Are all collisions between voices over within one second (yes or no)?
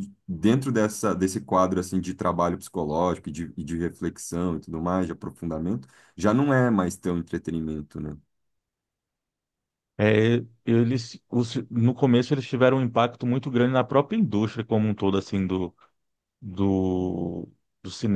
yes